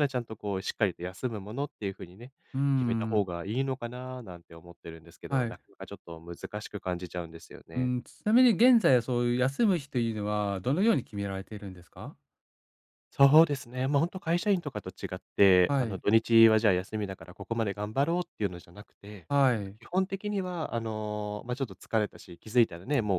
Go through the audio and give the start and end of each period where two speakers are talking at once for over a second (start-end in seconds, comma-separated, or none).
none